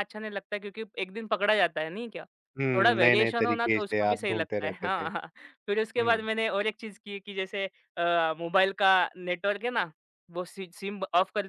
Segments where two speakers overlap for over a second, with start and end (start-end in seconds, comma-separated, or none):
2.6-5.0